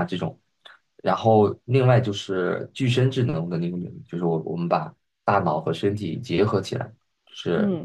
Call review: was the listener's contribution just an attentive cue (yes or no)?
yes